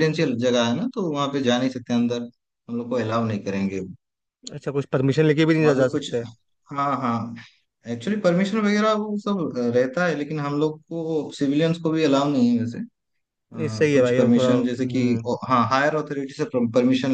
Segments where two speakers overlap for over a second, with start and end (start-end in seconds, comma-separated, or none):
13.6-15.2